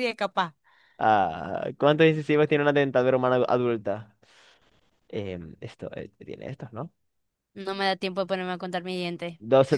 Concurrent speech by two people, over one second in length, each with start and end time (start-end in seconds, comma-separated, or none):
none